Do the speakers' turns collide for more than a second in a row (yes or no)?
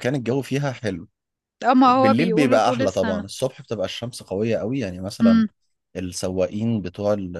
yes